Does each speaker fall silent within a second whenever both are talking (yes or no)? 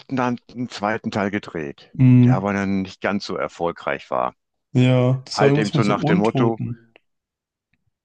no